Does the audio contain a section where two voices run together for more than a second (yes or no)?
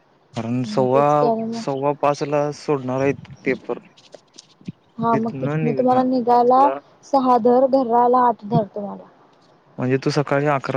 yes